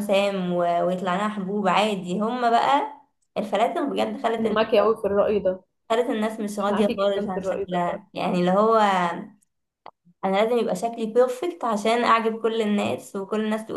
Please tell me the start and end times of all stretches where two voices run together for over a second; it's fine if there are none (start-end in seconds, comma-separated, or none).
6.7-8.0